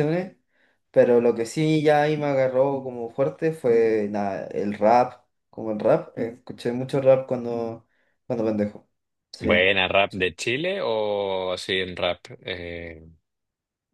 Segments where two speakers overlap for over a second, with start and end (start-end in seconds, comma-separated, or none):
none